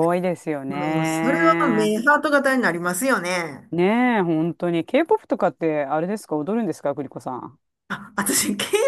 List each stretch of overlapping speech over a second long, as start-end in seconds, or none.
0.7-1.9